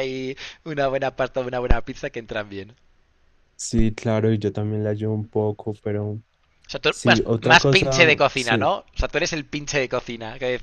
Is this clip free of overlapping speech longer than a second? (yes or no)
no